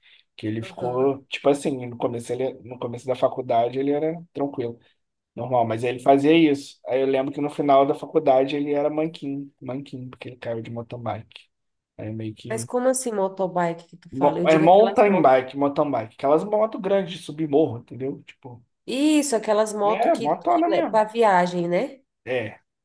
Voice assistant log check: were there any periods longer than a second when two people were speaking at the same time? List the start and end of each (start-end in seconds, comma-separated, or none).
14.1-15.4, 19.8-21.1